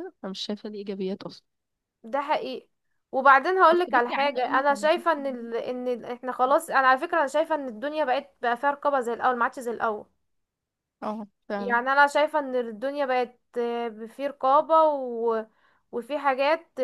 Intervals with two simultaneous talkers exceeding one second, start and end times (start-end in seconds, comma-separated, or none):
3.7-5.5